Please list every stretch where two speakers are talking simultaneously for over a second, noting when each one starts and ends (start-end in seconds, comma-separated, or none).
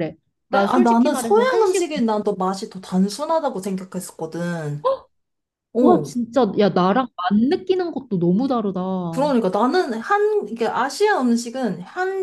0.5-1.9